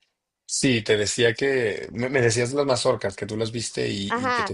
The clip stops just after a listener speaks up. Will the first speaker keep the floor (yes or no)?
no